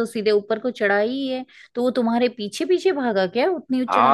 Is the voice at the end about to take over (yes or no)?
yes